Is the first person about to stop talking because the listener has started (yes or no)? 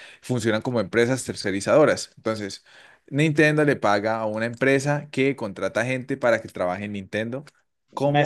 yes